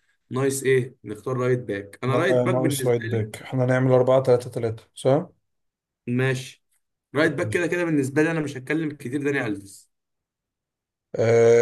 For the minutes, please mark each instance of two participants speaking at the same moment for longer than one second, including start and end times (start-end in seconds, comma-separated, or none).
2.1-3.3